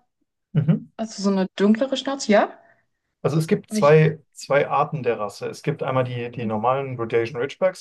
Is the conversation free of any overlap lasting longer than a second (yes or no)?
yes